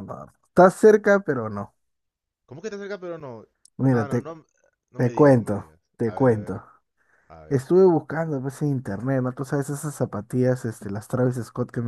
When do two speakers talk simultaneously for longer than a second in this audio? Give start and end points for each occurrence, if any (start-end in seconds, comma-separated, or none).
5.0-6.6